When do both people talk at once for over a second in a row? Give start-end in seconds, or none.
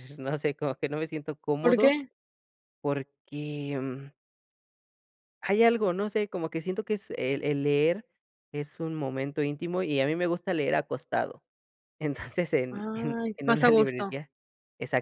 12.7-14.2